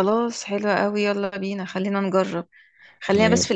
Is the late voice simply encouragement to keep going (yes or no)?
yes